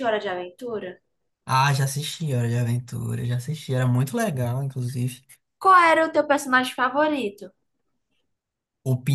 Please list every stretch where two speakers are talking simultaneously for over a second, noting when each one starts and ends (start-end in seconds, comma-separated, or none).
none